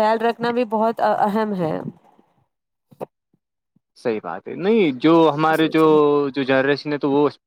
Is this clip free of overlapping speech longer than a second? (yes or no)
yes